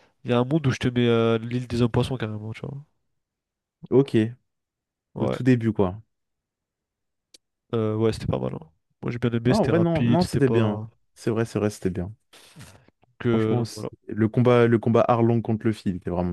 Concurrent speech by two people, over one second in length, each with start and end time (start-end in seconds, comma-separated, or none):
9.5-10.9